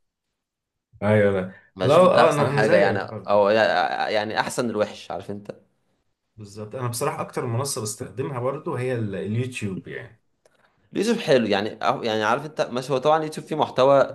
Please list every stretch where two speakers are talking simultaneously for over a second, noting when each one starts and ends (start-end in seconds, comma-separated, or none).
1.8-3.4